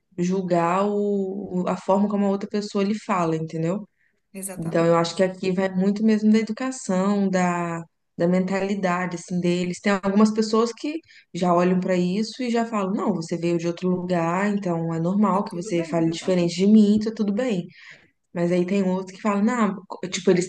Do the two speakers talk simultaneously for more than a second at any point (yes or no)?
yes